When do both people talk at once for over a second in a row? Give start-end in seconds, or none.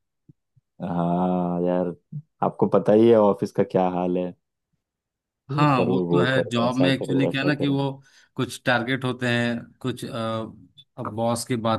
5.6-7.8